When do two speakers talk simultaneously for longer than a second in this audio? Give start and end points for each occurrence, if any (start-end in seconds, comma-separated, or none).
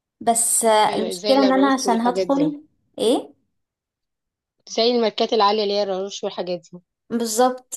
0.9-2.5